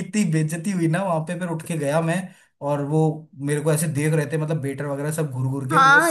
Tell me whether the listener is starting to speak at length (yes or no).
yes